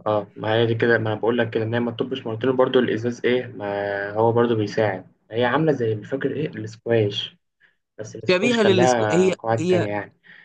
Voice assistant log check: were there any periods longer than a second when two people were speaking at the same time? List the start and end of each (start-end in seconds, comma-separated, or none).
8.3-9.9